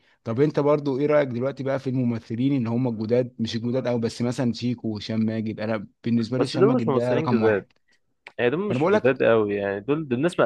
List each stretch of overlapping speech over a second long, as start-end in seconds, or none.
6.4-7.6